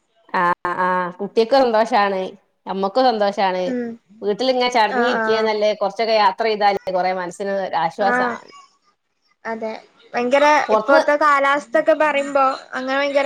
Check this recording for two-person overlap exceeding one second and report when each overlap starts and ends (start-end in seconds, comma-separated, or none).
none